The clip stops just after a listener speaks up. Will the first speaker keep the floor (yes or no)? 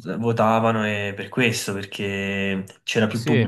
yes